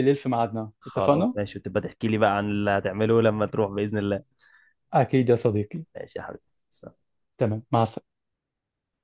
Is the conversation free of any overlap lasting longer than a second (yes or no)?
yes